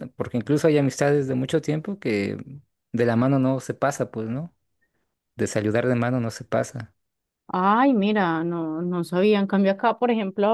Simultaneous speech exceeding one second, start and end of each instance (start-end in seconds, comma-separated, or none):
none